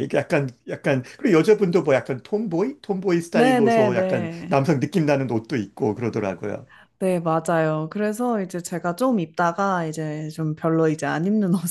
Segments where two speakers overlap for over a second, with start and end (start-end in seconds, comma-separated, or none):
3.4-4.6